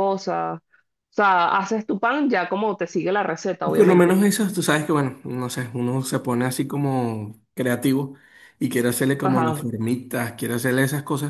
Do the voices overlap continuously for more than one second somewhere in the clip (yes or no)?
no